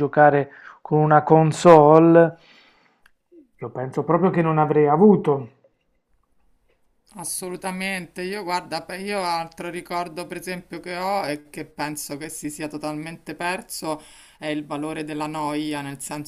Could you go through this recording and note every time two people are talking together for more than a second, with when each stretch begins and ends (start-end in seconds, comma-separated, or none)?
none